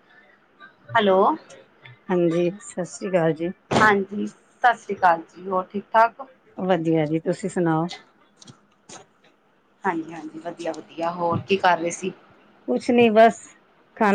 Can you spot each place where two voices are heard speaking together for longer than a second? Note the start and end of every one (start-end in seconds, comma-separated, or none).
none